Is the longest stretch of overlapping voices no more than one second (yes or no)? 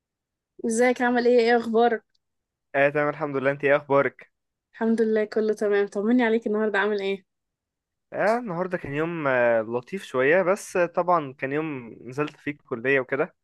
yes